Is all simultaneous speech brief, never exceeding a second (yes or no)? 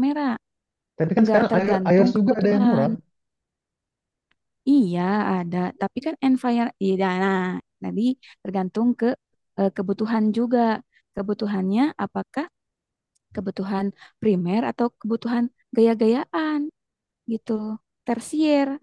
no